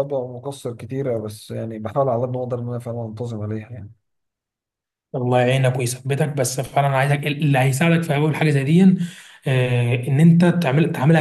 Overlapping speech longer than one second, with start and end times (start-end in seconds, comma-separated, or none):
none